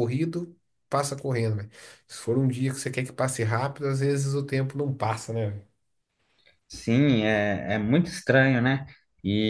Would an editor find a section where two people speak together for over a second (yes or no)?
no